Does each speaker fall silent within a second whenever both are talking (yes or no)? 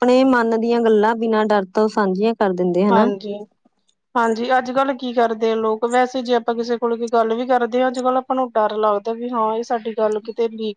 yes